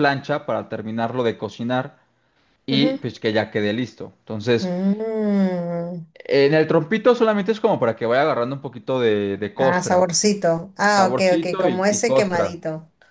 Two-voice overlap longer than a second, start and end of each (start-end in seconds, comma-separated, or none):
10.9-12.6